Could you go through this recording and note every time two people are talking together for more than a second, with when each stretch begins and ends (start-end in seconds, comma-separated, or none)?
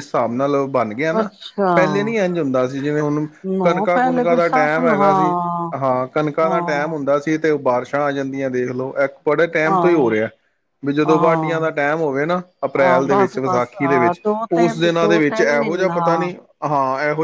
3.6-5.3, 12.8-16.3